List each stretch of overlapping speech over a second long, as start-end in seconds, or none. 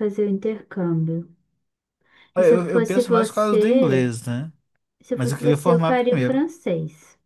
2.4-4.1, 5.1-6.4